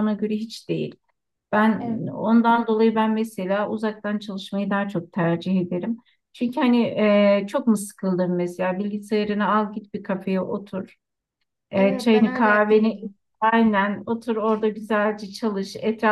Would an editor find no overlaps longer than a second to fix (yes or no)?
no